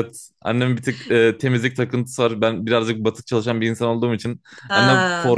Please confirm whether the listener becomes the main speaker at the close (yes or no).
no